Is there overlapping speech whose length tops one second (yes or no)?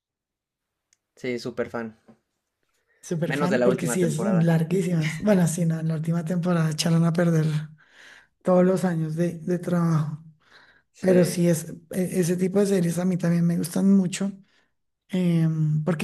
yes